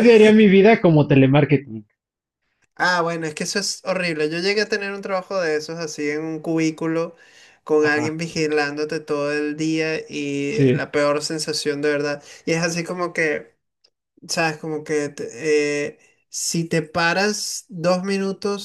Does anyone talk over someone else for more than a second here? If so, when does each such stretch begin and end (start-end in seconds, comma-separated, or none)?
none